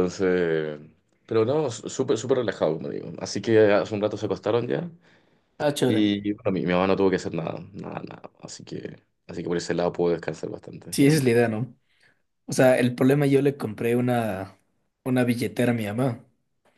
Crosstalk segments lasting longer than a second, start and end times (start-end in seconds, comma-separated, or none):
none